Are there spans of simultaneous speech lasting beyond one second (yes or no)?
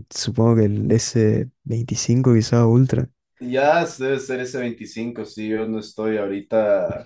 no